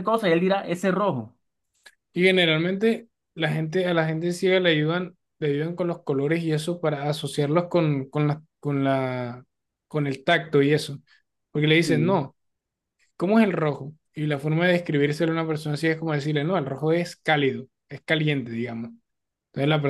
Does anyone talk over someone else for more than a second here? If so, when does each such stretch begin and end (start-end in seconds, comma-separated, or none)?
none